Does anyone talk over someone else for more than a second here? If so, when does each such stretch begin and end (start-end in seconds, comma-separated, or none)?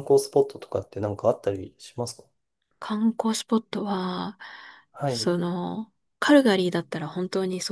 none